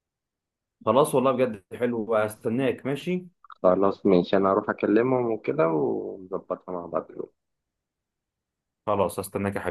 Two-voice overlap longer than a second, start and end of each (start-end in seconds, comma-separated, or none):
none